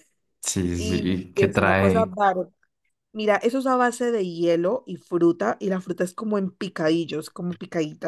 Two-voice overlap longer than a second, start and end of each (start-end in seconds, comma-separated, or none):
0.7-2.1